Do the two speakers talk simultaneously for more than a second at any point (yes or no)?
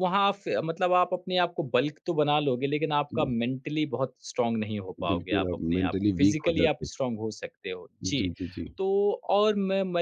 yes